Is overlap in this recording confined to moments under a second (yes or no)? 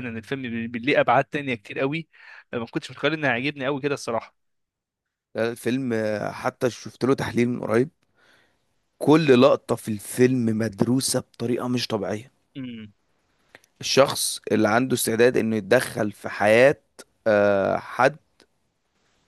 yes